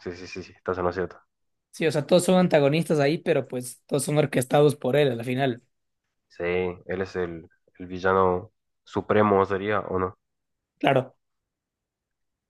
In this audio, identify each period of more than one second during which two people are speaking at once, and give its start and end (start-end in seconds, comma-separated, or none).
none